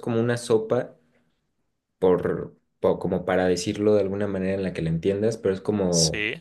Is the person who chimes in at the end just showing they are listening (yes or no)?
yes